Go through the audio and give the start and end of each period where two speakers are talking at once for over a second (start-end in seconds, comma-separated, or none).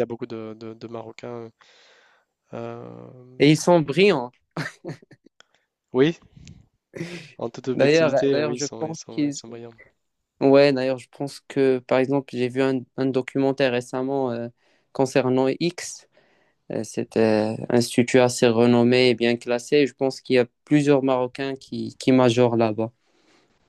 7.7-9.3